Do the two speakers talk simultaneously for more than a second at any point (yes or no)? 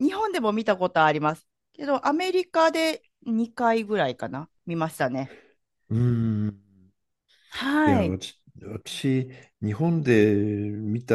no